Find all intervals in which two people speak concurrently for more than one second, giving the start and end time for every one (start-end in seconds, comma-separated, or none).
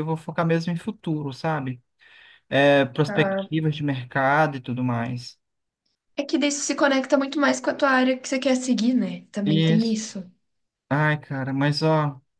none